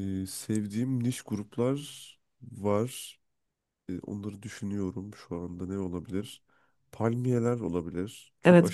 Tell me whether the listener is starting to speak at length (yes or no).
yes